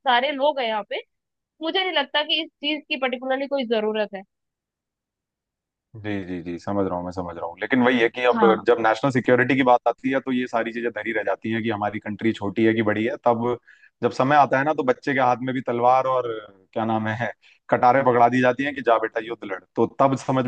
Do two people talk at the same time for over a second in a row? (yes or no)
no